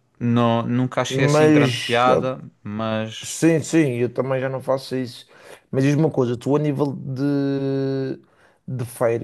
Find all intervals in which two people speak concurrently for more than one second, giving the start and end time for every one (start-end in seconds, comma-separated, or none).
1.1-2.3